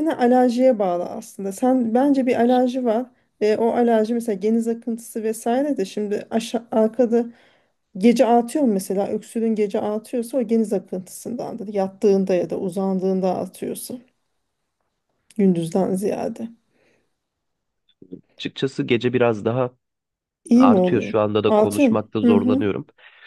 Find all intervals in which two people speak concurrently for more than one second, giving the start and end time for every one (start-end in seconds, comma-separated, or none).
20.6-22.6